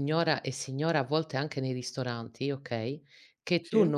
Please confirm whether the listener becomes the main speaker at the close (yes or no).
no